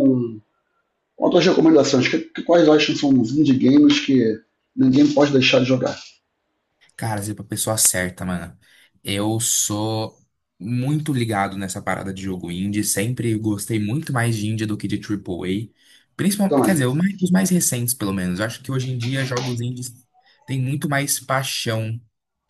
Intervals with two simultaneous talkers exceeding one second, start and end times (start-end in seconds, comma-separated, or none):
none